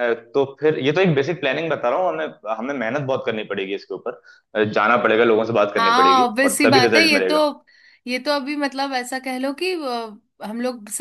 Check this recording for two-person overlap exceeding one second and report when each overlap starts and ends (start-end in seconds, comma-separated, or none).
5.8-7.4